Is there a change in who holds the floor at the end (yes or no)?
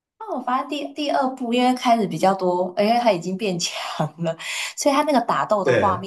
no